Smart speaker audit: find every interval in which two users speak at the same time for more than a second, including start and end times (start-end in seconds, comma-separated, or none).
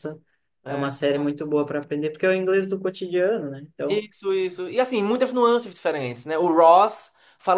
none